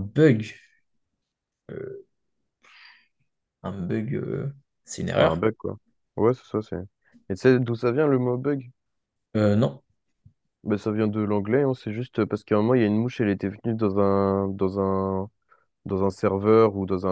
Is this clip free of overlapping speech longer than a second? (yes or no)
yes